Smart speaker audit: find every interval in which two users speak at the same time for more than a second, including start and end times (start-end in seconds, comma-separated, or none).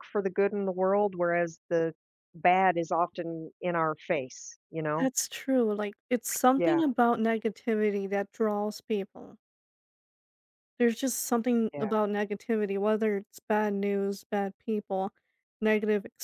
none